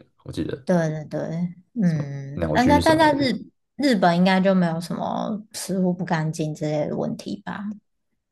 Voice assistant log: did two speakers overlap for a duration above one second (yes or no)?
yes